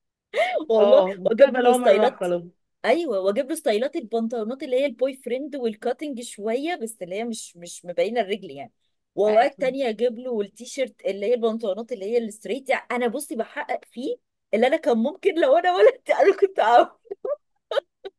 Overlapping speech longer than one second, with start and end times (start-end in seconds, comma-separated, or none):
0.8-2.3